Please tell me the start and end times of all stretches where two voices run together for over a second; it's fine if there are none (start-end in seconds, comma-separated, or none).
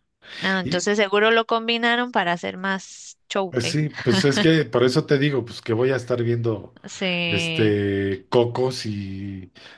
none